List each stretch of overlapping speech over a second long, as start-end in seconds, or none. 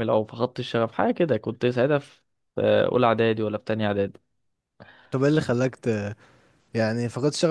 none